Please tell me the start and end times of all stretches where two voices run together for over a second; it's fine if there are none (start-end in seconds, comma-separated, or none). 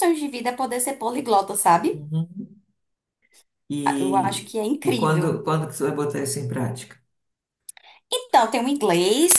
4.0-5.4